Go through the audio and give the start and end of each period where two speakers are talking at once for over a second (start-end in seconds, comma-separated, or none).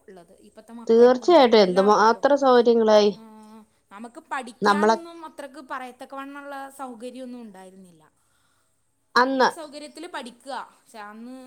0.9-2.2